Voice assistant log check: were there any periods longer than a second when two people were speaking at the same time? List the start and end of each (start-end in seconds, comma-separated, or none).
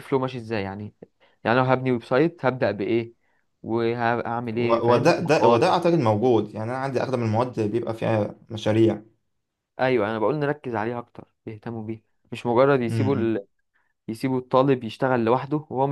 4.5-5.7